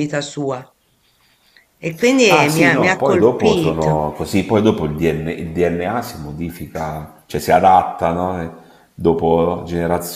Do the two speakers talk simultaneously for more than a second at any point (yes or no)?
yes